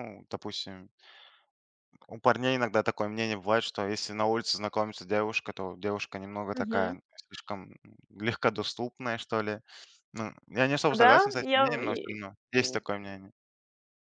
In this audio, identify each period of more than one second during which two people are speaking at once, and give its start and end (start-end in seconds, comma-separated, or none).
11.0-12.8